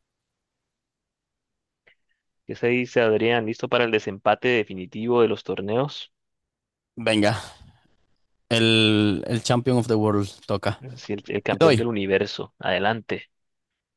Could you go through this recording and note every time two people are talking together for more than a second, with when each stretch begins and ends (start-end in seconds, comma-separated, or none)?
none